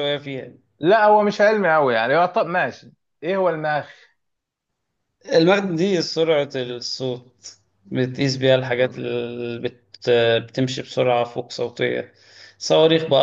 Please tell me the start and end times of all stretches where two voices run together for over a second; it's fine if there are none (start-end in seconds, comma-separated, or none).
none